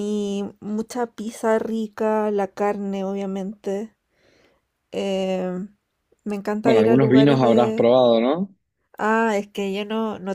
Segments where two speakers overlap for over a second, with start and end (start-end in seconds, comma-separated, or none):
6.6-7.9